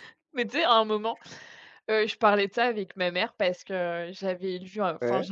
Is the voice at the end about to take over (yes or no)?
no